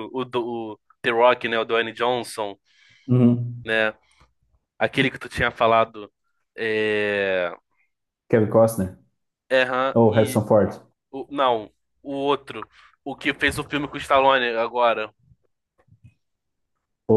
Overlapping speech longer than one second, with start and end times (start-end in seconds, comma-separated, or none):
none